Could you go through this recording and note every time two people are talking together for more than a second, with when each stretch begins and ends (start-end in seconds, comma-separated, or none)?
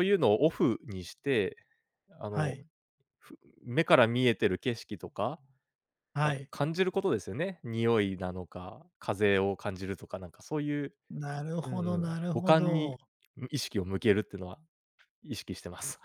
11.6-13.0